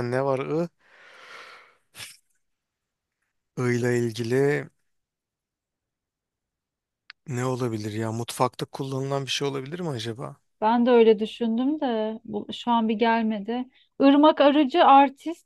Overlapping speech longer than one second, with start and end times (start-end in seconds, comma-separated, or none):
none